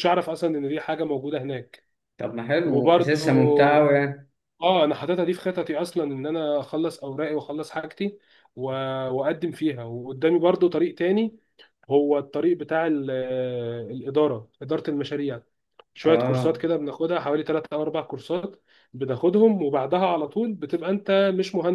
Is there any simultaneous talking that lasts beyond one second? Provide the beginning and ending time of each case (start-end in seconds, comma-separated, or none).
2.6-3.9